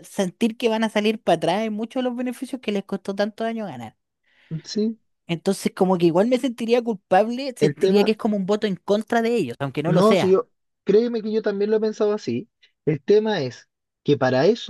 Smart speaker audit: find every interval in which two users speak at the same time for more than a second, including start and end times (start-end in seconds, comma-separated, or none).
none